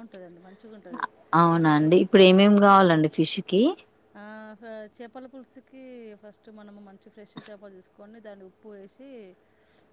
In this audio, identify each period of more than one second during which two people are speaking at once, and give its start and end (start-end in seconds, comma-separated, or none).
none